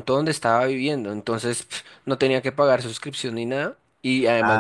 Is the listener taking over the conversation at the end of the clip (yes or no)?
no